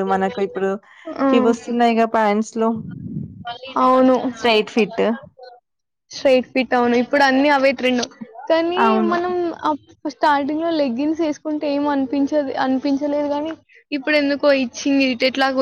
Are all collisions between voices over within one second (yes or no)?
yes